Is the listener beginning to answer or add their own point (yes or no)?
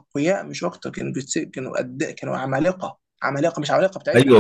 yes